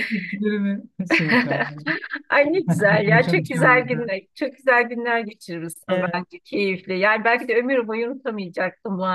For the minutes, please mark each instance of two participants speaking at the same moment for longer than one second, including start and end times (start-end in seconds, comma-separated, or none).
2.6-4.1